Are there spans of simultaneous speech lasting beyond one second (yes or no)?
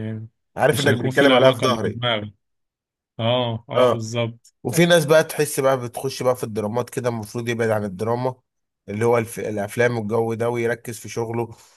yes